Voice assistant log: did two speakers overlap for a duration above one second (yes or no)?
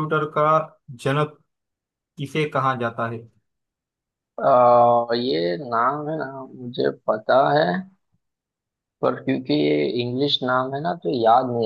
no